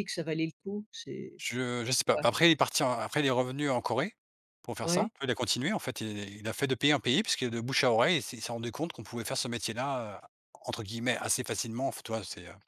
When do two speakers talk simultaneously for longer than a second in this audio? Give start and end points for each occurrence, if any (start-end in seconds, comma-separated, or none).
none